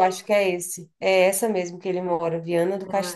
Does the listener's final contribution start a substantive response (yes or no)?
yes